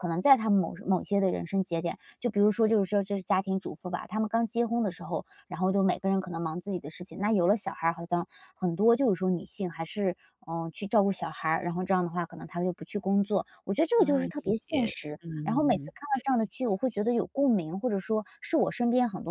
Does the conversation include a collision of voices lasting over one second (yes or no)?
yes